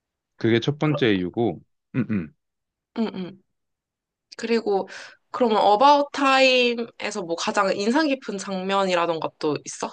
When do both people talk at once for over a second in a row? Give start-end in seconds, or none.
none